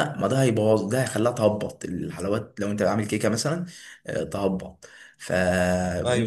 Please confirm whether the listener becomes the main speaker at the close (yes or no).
no